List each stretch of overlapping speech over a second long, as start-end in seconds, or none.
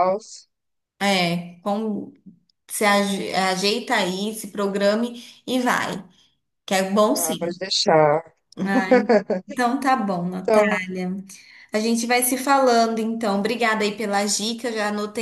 none